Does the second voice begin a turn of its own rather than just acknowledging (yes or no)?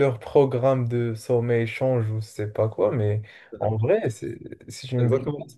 no